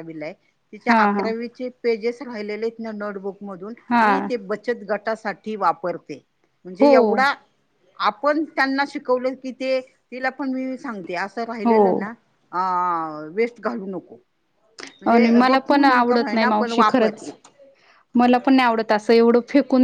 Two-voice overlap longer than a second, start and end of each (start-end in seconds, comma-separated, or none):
15.1-17.1